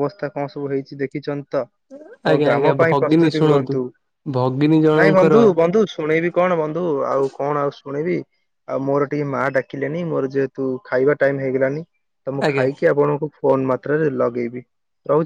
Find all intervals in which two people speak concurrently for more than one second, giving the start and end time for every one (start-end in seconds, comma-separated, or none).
2.3-3.8